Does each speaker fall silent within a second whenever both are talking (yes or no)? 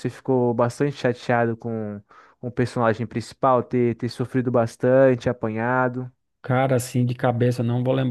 yes